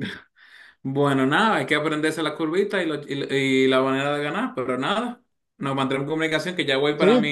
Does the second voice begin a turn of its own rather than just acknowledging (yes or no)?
yes